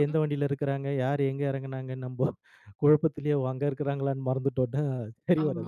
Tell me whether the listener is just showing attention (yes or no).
no